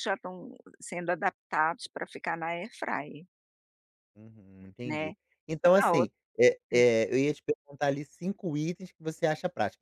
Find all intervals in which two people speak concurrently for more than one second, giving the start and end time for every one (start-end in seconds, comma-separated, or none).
none